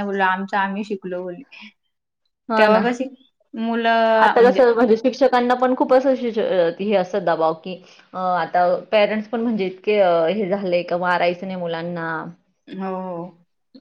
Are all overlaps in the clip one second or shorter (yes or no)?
yes